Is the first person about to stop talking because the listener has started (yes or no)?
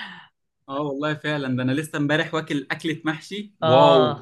yes